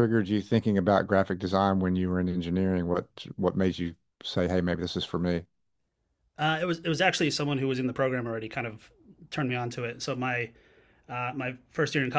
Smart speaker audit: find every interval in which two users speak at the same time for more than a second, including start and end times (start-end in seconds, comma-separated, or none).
none